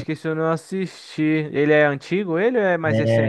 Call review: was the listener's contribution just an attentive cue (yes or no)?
no